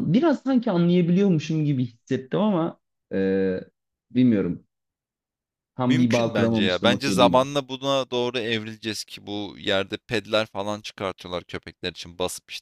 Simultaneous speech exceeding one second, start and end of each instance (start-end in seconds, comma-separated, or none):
5.8-7.5